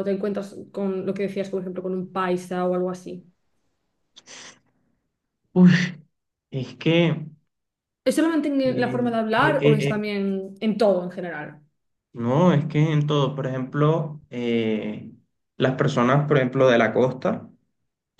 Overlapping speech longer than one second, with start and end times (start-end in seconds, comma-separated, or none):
8.7-10.0